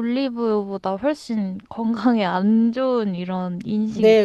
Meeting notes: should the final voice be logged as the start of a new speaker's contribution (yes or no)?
yes